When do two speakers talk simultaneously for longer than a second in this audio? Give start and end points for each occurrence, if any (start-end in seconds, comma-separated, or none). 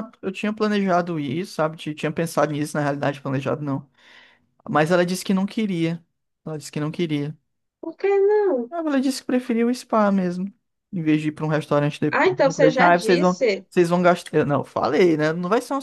12.1-13.6